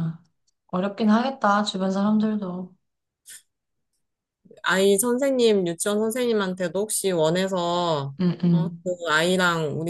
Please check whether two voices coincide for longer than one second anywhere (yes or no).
no